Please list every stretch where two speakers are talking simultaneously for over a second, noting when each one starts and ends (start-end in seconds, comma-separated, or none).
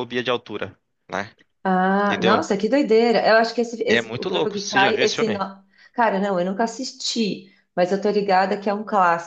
3.9-5.5